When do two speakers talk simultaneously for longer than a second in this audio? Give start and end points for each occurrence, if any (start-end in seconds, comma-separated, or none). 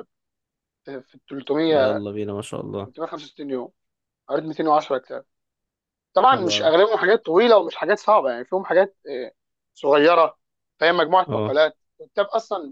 none